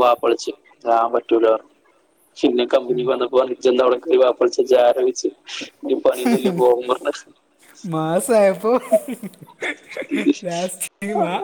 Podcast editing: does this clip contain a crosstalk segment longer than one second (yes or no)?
no